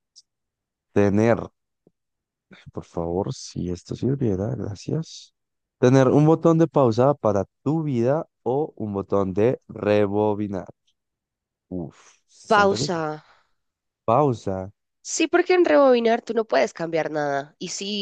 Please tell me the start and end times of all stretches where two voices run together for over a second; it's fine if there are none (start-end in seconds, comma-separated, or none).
none